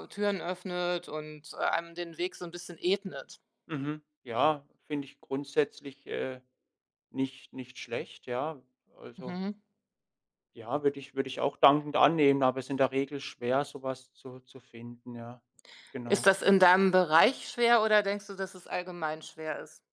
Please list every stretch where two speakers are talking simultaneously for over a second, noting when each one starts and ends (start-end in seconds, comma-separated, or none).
none